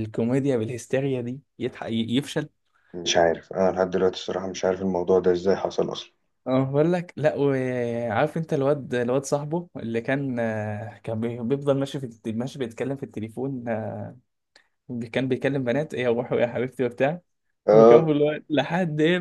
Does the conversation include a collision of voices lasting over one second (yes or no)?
no